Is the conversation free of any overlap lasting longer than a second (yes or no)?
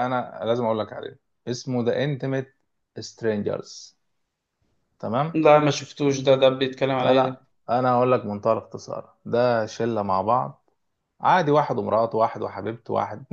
yes